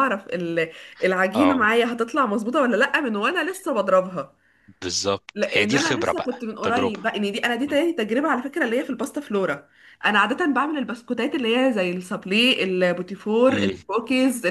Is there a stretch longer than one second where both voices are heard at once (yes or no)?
yes